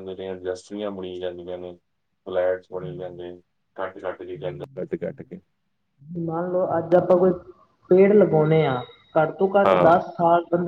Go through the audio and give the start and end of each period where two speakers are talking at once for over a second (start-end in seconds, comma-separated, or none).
none